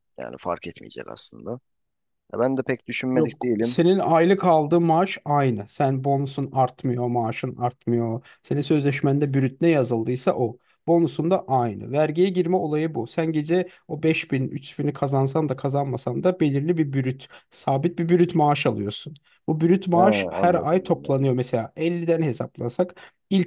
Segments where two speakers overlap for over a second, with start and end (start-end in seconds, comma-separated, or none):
19.9-21.3